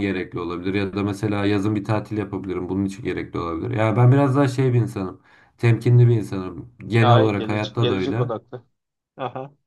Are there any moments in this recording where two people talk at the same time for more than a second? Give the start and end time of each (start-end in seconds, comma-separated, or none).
7.0-8.3